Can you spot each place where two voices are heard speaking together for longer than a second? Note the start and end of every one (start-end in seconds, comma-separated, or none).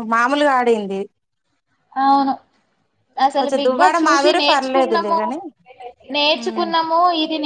3.4-5.2